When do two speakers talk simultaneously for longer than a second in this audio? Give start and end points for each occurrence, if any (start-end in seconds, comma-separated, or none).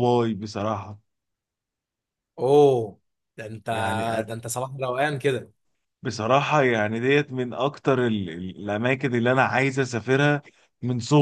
none